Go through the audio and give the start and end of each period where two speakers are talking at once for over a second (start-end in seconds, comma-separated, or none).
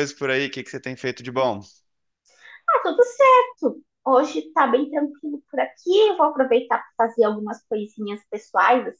none